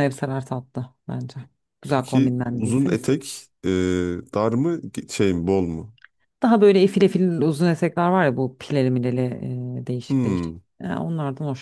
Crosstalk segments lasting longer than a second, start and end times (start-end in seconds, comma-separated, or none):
1.9-3.2